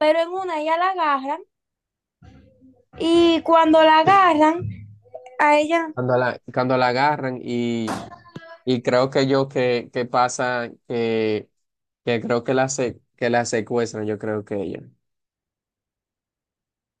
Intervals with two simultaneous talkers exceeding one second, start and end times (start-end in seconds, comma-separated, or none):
none